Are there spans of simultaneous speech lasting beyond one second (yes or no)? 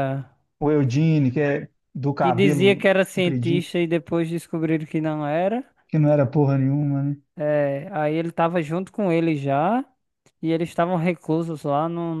yes